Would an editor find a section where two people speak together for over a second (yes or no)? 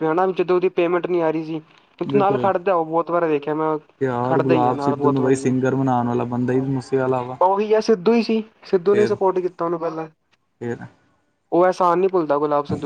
yes